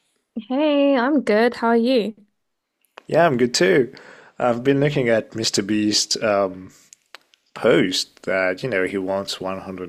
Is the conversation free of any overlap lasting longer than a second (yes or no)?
yes